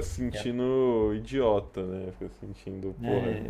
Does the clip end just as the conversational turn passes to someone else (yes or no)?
yes